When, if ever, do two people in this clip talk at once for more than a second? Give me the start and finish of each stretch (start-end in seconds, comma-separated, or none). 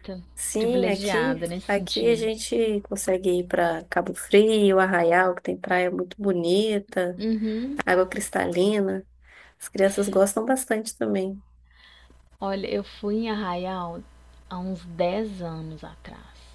0.6-2.3